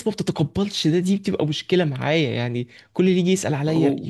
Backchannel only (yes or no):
yes